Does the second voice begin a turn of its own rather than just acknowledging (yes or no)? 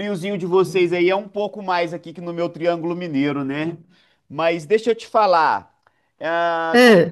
no